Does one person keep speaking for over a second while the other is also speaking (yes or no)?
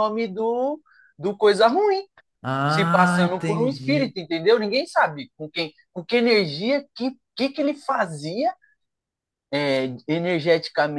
yes